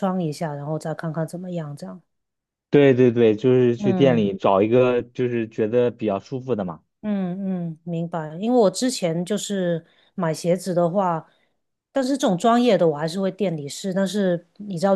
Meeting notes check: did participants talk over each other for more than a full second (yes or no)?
no